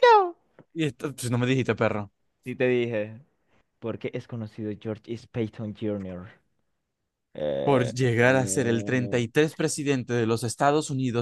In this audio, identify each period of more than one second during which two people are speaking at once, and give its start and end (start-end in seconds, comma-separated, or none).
7.6-9.3